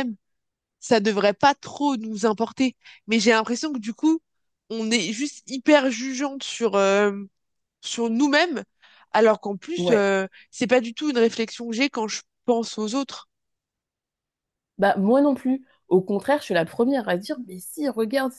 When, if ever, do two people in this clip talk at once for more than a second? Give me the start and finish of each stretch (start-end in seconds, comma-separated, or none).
none